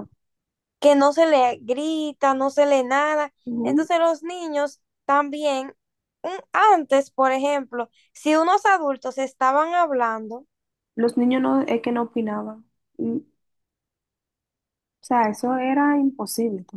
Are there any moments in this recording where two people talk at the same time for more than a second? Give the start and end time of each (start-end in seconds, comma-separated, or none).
none